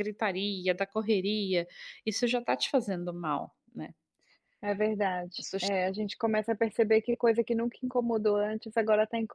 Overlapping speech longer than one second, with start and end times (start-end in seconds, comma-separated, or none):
none